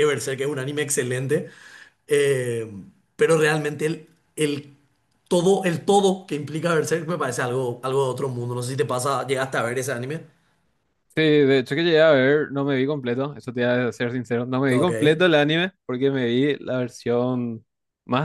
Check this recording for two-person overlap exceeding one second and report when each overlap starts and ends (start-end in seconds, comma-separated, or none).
none